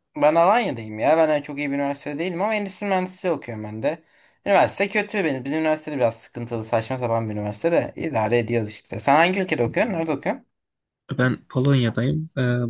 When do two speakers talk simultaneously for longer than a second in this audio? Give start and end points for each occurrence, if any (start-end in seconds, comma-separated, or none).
none